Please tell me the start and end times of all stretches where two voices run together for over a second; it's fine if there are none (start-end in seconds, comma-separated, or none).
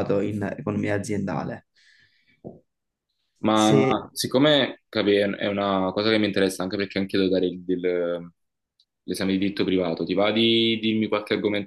none